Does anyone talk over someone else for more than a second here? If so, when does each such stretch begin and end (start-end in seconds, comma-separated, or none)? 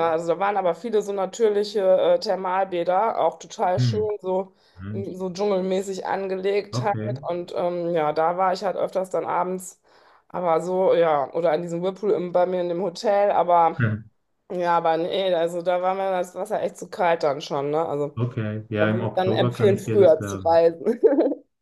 18.8-20.6